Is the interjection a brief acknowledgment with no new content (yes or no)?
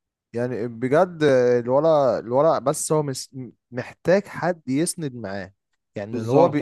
yes